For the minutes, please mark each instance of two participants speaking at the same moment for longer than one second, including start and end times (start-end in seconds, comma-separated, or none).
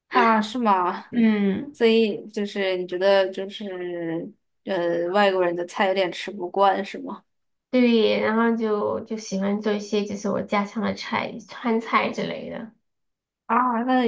none